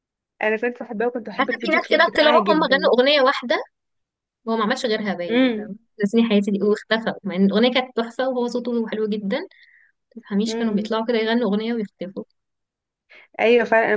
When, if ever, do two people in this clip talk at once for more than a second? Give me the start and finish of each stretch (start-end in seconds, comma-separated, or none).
1.4-2.9